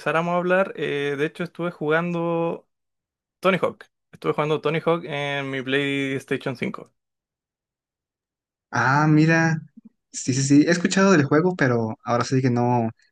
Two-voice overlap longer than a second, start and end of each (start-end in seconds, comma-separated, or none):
none